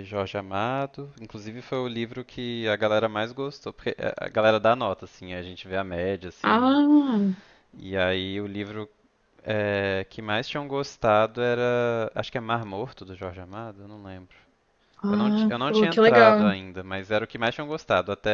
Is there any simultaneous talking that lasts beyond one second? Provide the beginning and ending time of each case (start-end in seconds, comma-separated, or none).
15.1-16.5